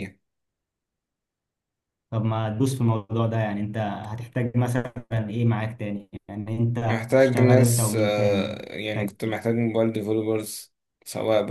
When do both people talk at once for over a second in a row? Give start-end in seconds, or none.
6.9-9.4